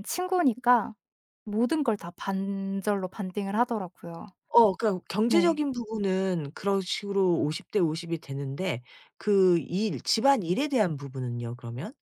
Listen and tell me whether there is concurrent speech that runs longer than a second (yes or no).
no